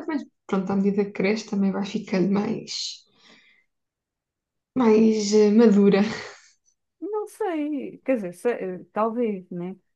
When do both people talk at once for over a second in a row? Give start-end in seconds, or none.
none